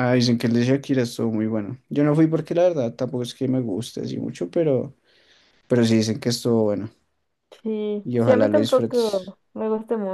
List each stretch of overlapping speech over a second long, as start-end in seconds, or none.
8.0-9.4